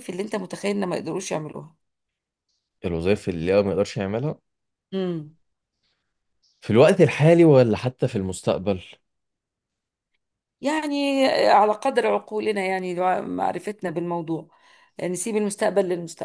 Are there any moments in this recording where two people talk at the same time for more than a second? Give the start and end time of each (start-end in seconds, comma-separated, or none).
none